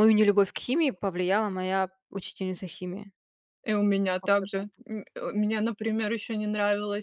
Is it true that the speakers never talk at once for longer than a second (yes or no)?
yes